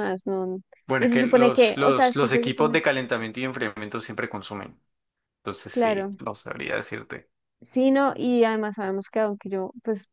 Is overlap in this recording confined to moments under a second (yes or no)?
no